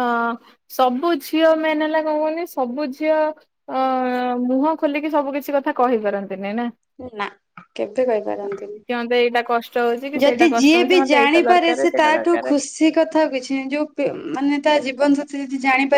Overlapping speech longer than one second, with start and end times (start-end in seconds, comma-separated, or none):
10.2-12.5